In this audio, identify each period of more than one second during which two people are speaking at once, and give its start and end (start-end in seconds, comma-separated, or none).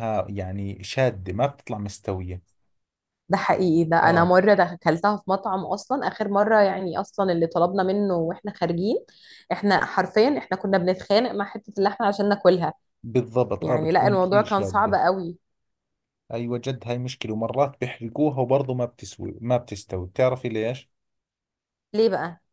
13.6-14.9